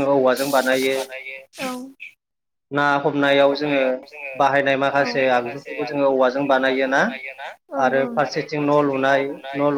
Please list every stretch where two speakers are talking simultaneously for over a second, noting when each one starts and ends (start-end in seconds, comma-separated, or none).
5.3-7.0